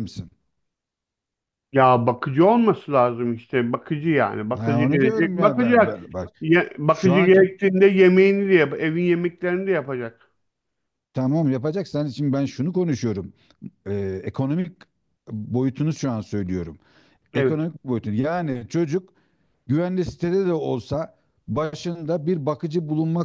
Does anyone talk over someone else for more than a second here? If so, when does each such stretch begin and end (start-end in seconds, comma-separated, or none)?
4.5-6.0